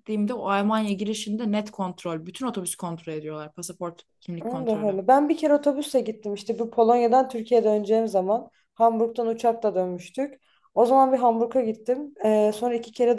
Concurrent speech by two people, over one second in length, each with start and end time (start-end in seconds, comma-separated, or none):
none